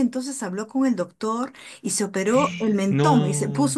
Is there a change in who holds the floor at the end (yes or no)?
no